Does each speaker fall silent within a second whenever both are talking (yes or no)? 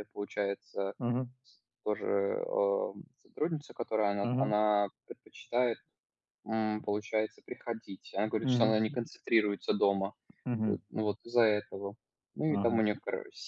yes